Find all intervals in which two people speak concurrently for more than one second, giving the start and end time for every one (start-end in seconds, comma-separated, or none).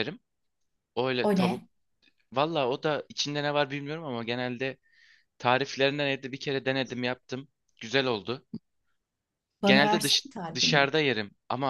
9.6-10.9